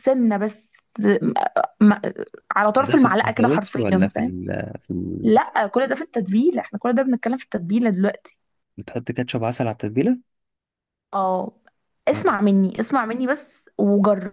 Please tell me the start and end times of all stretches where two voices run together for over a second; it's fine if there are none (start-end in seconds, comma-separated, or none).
2.8-4.3